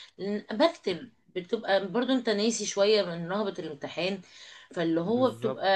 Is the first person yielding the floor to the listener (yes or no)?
no